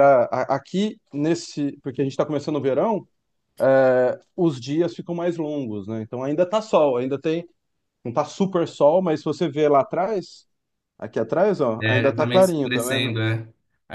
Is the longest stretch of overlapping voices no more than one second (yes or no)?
no